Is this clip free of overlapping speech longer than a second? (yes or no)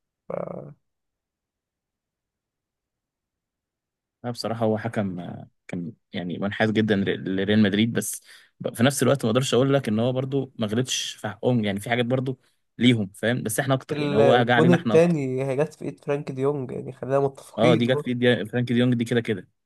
no